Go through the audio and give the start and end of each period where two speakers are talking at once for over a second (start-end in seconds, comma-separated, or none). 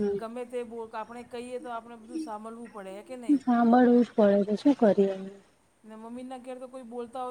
none